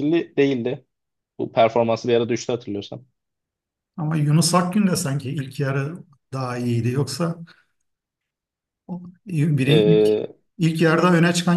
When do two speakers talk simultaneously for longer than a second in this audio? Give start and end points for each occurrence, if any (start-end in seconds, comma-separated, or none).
none